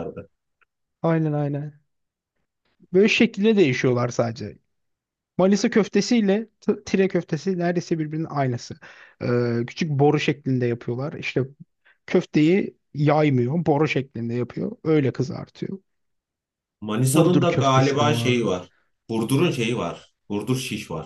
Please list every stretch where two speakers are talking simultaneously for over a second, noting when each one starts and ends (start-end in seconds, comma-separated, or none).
17.1-18.5